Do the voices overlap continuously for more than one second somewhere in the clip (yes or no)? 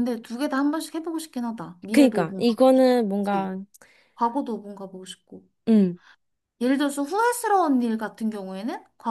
yes